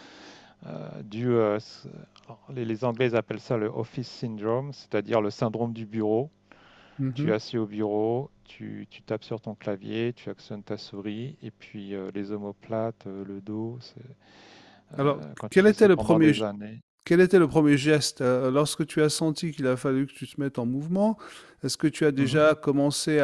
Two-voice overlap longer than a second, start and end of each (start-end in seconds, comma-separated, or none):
15.0-16.3